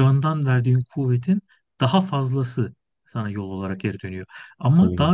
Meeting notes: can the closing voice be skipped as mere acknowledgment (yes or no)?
yes